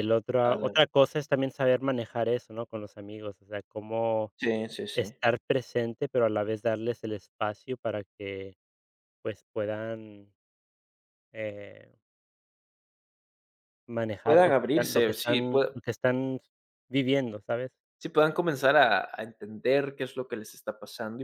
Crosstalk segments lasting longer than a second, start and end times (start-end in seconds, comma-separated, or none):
14.2-15.7